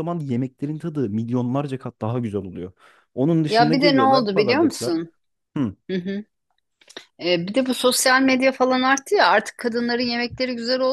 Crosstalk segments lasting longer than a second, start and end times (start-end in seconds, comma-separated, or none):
3.5-5.0